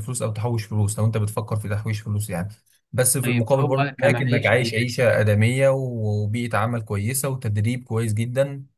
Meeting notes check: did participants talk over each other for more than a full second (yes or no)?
yes